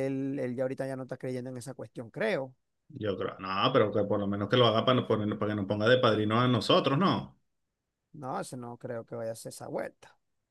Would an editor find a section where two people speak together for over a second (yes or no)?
no